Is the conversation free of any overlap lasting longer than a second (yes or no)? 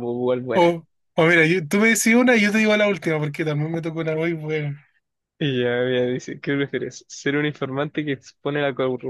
yes